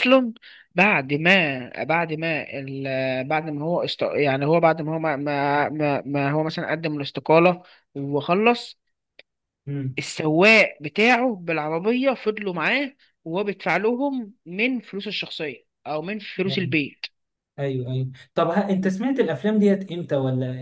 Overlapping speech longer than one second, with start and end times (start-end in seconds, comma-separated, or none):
none